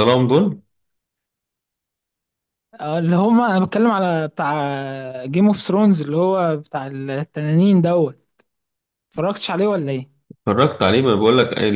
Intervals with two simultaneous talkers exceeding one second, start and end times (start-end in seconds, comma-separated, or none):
none